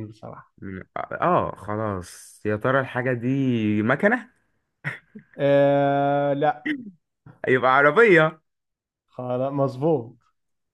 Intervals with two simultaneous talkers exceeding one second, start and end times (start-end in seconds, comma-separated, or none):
none